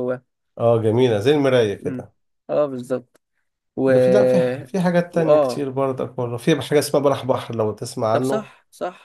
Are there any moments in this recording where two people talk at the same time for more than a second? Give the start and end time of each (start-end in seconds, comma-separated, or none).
none